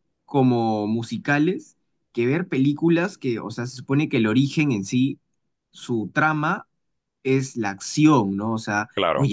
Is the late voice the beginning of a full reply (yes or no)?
no